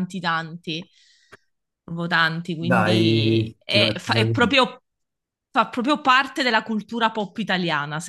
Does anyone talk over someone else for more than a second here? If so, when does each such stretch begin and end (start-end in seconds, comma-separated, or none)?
2.6-4.6